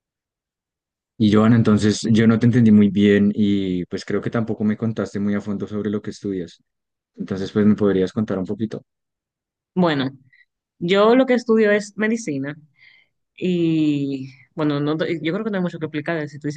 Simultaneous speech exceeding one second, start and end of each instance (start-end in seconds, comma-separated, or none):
none